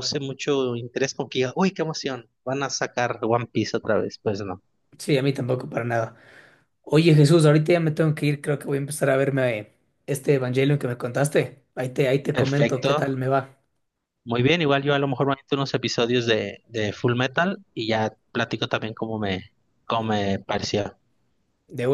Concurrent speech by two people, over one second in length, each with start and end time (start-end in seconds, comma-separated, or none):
none